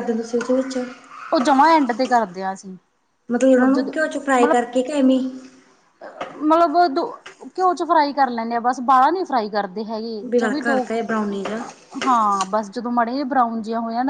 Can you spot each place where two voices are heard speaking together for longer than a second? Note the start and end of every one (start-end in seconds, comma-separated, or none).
none